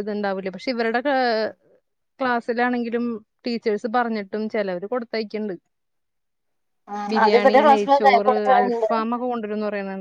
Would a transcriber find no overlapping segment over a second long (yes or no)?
no